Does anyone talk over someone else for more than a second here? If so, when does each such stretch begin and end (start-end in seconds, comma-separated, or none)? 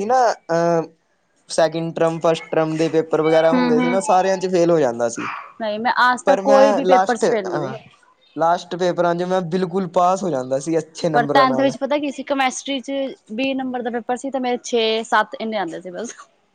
6.2-7.7